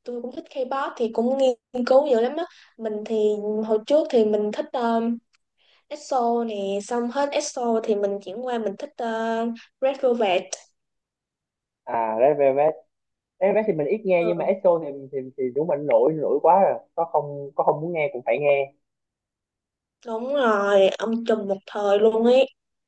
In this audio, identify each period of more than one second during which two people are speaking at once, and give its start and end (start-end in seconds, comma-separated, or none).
none